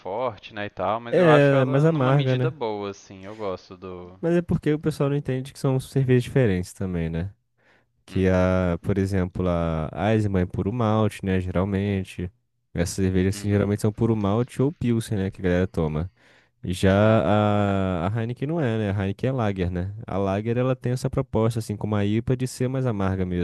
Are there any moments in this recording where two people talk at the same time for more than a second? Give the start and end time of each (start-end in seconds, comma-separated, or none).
1.1-2.6